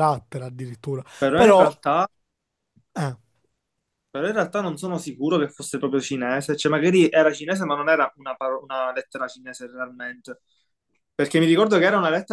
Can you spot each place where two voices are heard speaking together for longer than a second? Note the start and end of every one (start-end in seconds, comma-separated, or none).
none